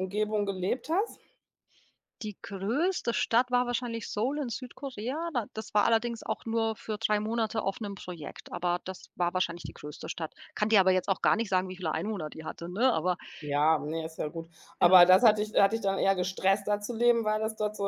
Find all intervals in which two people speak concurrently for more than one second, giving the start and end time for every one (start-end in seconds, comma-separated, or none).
none